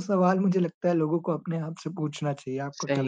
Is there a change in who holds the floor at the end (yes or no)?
yes